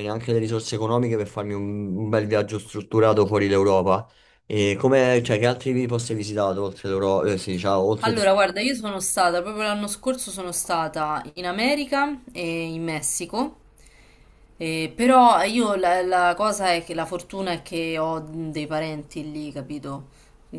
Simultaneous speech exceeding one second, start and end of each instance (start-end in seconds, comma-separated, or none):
none